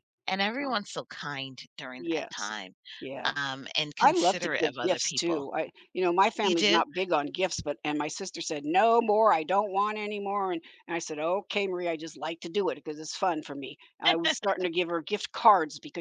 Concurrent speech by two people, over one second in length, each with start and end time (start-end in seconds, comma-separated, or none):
4.0-5.5